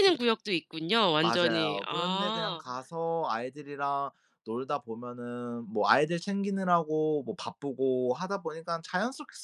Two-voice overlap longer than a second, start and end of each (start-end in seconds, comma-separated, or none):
1.2-2.6